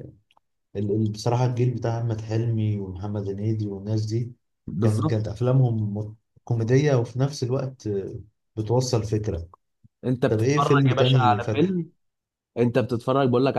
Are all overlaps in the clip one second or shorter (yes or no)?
no